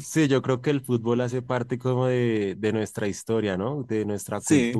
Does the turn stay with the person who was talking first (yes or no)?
yes